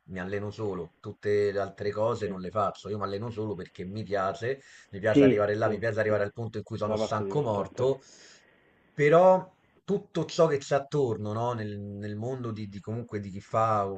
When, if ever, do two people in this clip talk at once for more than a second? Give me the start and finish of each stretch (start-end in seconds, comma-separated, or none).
5.1-7.9